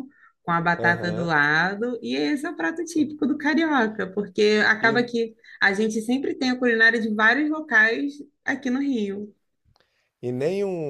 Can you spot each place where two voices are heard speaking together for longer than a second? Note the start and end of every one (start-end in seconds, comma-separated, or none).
none